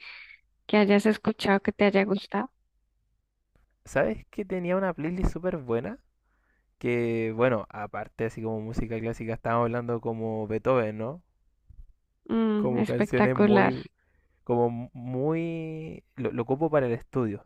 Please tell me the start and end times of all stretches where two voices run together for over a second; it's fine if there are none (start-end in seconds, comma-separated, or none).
12.6-13.8